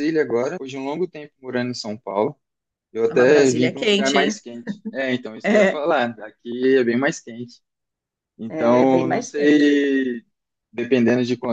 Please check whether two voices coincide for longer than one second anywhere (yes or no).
yes